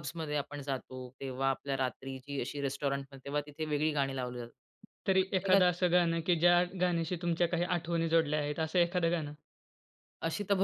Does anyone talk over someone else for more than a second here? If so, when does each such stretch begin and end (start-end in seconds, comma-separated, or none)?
none